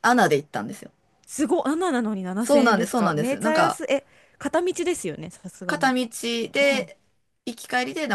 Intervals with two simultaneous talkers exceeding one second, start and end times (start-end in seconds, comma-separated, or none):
2.4-3.8